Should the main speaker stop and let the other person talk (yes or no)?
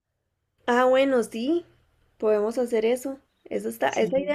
no